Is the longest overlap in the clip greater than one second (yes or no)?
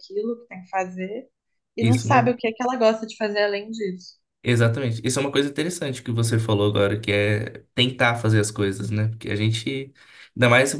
no